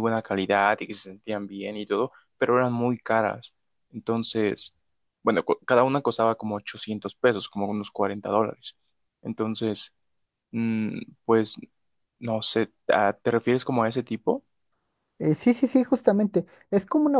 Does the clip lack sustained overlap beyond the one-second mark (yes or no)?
yes